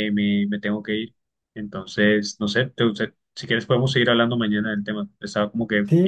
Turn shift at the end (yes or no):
yes